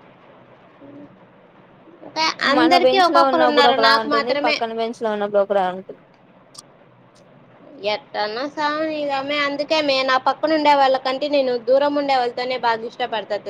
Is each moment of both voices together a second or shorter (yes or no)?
no